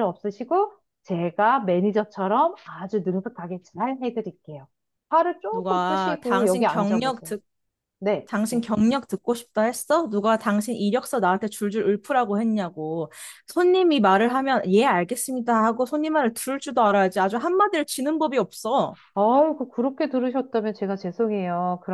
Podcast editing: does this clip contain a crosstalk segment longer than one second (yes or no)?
yes